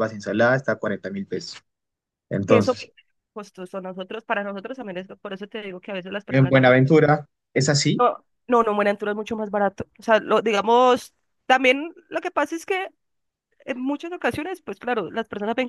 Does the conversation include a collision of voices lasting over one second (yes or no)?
no